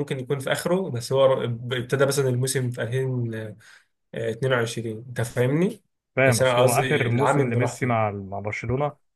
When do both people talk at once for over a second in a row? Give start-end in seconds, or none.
6.3-8.0